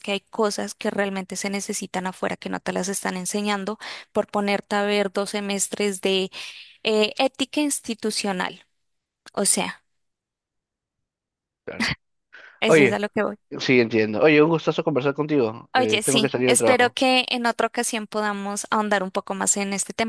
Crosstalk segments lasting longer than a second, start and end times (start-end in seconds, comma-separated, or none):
15.8-17.0